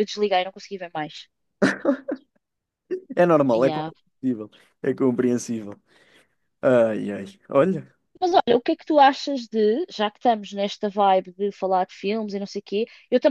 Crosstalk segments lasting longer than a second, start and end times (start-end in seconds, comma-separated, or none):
none